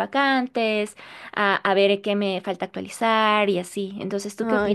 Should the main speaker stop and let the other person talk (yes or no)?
yes